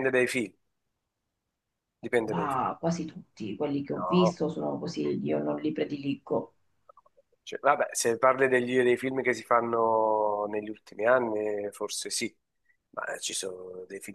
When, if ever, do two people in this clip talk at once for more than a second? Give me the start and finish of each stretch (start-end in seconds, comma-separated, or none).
none